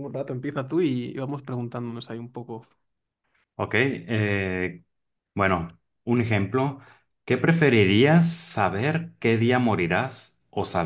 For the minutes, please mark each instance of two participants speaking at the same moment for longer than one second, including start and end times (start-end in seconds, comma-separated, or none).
none